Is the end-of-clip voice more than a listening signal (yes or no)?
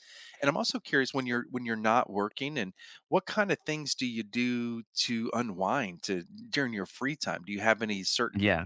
no